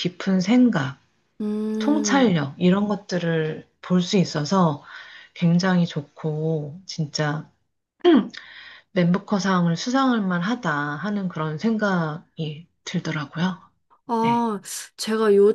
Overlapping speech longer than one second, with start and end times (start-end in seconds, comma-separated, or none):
none